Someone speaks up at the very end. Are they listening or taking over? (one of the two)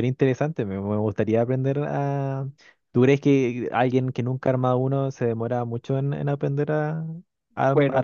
taking over